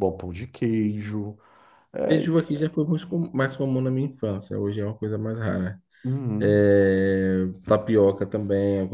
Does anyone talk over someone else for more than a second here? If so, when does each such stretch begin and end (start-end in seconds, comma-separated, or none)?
none